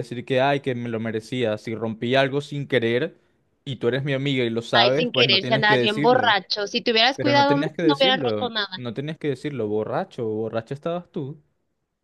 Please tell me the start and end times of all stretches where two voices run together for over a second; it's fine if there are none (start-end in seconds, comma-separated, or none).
4.7-6.4, 7.1-8.9